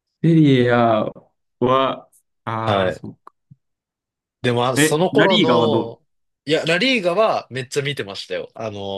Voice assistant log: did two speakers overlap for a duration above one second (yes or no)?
yes